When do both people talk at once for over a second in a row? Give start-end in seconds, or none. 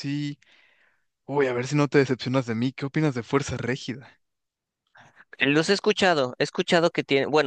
none